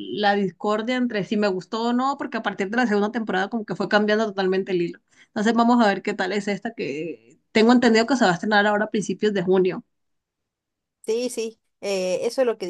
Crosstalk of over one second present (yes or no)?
no